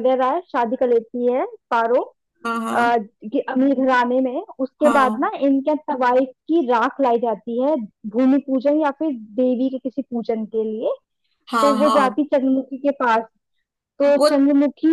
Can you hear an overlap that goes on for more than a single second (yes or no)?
no